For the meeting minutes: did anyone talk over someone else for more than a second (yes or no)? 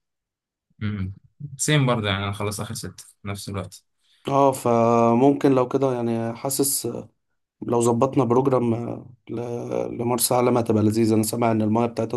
no